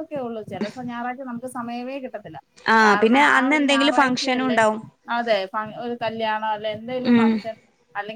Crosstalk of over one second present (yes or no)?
yes